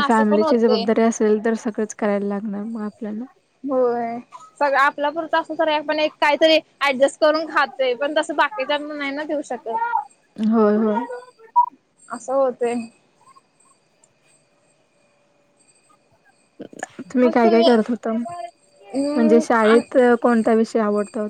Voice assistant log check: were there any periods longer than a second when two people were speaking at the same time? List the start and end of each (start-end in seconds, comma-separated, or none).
none